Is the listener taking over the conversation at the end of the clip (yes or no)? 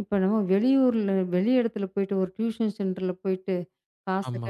no